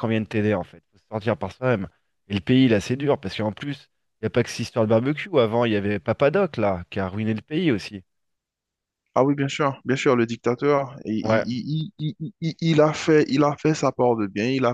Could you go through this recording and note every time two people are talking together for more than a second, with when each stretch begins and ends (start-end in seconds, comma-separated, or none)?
none